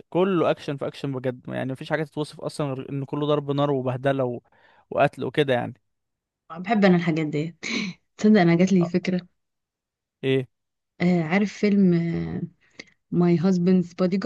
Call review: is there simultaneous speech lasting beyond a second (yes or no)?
no